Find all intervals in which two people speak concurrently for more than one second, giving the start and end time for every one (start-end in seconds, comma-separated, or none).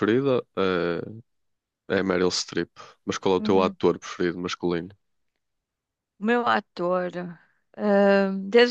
none